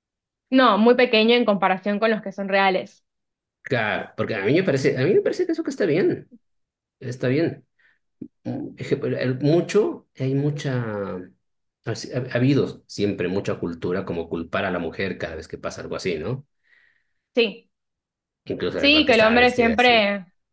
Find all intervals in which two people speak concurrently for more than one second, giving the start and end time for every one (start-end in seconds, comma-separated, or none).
18.8-20.0